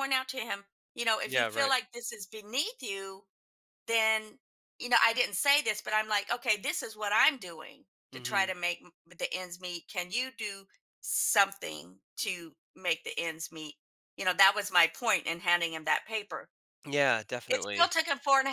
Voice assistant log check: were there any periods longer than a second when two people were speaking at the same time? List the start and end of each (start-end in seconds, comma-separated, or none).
none